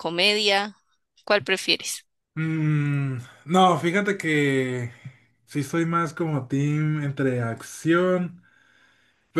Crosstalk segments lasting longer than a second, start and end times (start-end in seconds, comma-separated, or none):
none